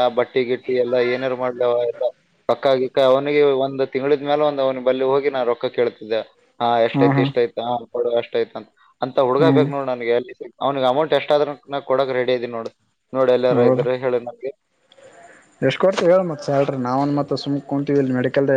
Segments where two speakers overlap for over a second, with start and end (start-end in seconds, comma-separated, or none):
none